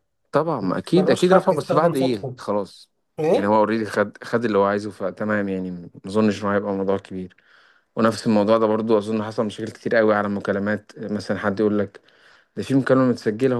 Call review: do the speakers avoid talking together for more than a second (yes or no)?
no